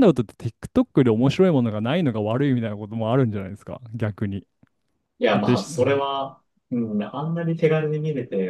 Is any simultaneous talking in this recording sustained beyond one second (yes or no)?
no